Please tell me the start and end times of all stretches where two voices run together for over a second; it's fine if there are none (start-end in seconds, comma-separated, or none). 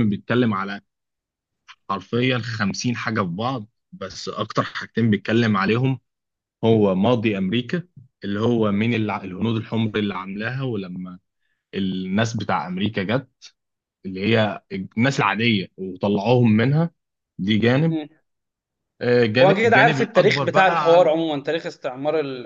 19.4-21.1